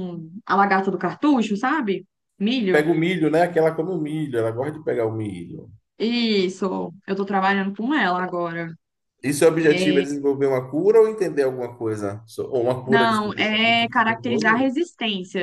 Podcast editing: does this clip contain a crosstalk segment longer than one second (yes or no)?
yes